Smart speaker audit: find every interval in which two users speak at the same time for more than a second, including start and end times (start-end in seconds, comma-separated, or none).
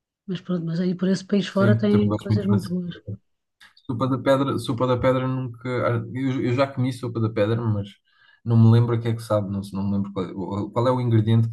1.5-2.7